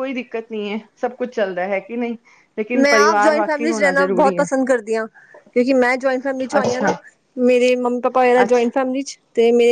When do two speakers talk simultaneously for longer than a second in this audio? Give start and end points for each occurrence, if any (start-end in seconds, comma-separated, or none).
2.8-4.5